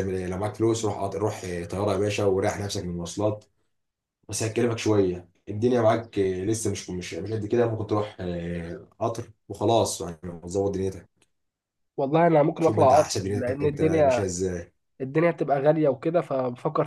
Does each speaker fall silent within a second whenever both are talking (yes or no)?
no